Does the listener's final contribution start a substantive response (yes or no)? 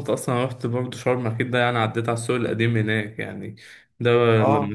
no